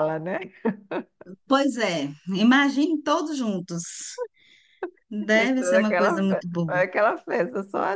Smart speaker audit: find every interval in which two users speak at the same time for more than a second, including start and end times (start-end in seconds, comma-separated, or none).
5.3-6.8